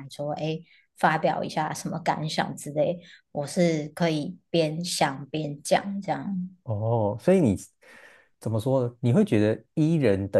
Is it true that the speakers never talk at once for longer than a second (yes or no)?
yes